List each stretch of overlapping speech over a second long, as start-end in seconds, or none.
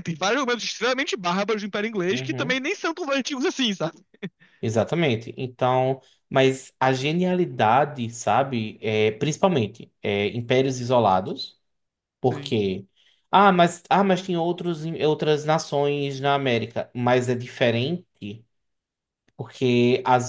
none